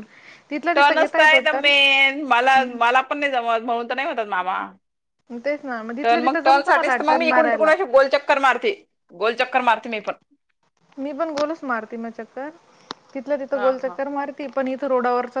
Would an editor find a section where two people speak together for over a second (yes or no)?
yes